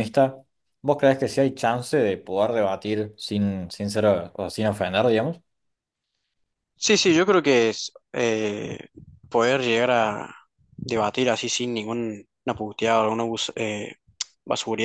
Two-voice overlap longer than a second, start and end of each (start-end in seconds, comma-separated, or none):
none